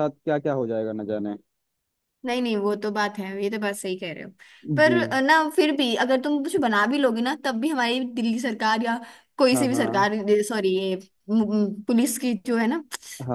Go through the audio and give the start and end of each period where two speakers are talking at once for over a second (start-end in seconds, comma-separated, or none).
none